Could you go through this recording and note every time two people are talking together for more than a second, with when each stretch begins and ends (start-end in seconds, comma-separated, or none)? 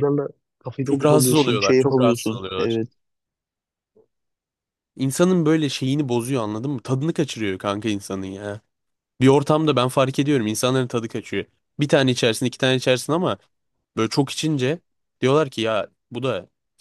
0.8-2.8